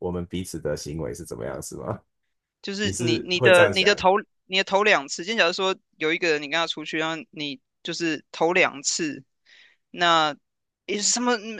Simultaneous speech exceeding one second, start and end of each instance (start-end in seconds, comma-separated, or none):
2.8-4.0